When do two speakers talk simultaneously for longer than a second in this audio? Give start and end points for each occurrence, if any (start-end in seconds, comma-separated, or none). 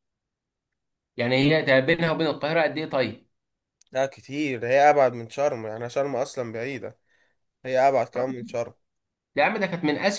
none